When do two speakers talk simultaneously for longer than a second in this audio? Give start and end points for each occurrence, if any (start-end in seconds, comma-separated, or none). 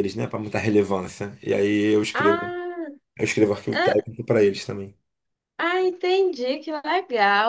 none